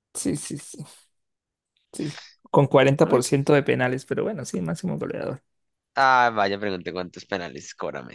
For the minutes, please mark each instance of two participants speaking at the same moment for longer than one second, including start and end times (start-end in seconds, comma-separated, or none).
none